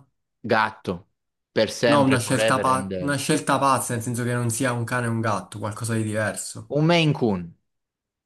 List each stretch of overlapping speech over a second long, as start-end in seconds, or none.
1.9-3.2